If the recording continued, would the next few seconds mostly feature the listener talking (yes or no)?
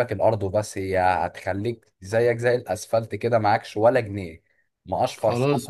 yes